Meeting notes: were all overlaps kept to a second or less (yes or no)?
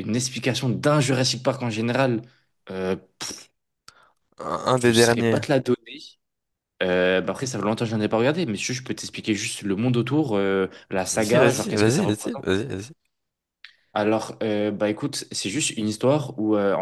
no